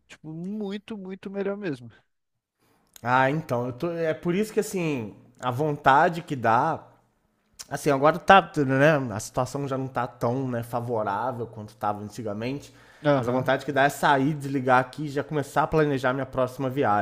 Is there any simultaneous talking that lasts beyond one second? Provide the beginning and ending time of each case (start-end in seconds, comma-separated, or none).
none